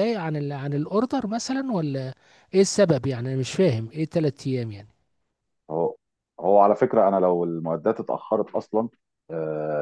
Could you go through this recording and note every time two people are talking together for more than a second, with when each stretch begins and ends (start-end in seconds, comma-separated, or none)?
none